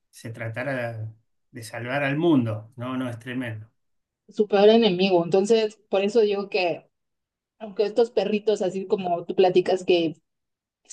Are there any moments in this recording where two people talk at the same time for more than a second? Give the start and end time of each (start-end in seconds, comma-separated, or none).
none